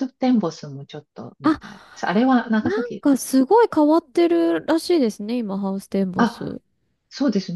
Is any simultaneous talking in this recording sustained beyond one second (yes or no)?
no